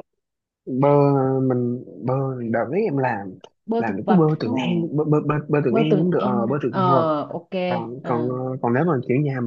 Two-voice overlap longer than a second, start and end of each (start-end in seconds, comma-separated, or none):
5.7-7.1